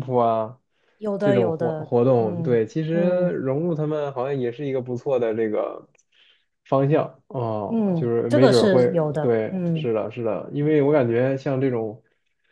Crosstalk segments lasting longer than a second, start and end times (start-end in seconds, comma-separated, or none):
1.2-3.4, 7.7-9.9